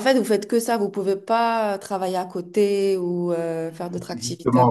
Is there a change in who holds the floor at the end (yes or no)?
yes